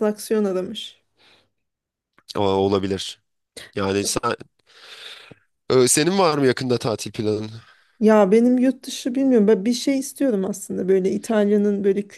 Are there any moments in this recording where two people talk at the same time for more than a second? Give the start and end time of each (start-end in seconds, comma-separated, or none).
none